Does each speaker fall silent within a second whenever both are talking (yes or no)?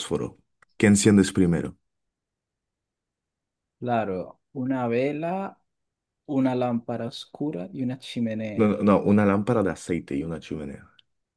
yes